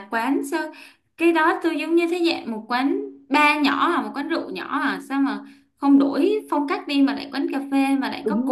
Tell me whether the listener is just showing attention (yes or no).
no